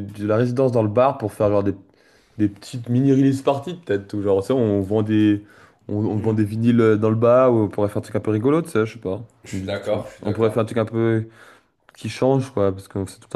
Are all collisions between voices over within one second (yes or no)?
no